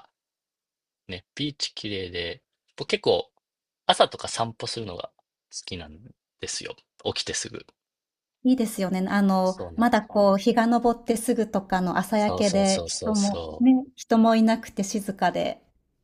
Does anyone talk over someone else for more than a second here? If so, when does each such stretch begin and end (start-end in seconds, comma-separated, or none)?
12.1-13.7